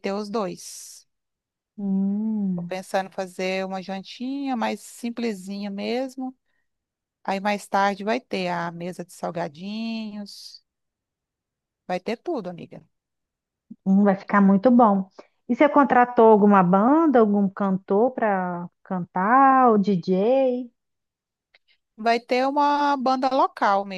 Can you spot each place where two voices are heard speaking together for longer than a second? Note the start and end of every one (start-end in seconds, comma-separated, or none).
none